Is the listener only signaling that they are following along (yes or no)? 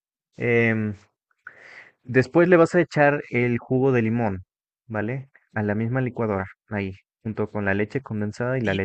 no